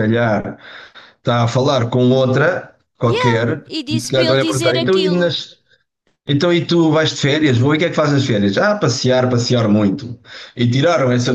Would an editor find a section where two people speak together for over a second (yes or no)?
yes